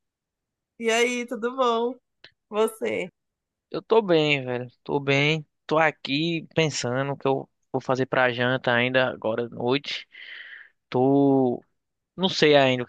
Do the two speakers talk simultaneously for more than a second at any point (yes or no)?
no